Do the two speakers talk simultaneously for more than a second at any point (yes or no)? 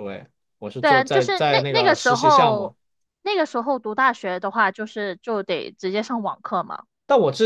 yes